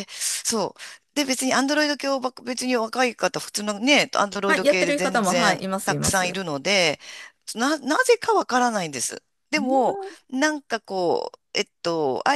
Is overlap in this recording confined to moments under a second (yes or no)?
no